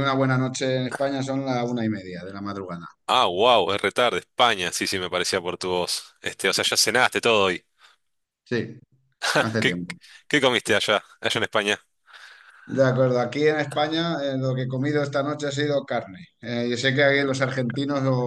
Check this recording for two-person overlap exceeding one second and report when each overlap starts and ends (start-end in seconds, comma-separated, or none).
none